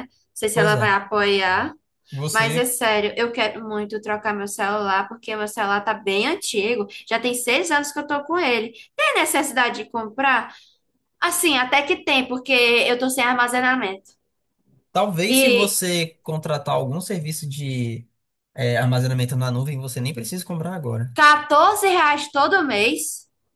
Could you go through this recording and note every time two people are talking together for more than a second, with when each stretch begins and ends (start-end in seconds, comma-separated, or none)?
none